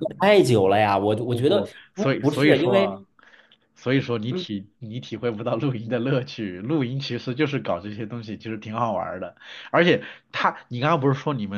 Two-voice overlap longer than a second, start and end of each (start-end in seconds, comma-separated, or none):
1.1-3.0